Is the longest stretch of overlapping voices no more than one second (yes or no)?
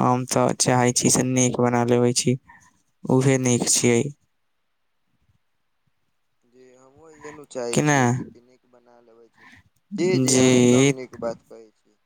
yes